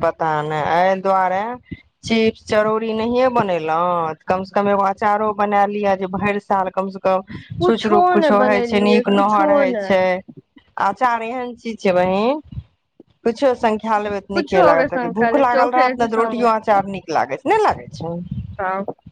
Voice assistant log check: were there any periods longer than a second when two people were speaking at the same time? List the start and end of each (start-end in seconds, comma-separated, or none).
7.6-10.0, 14.3-16.5